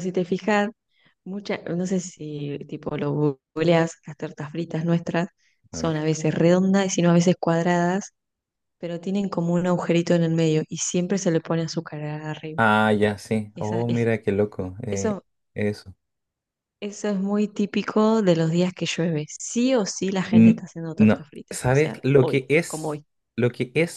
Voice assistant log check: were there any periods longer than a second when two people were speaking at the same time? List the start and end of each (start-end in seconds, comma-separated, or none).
20.3-23.1